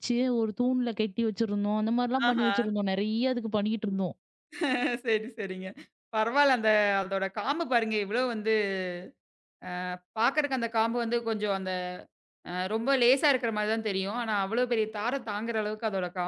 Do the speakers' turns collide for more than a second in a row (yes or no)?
no